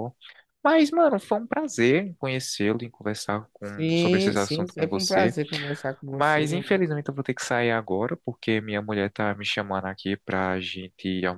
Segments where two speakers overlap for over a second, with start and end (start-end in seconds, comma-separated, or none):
3.6-5.4